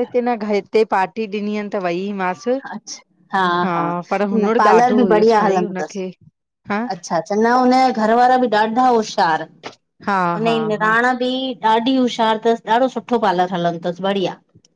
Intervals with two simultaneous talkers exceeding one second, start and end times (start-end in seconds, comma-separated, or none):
4.4-6.0